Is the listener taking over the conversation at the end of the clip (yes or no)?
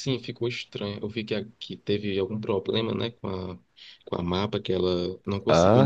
yes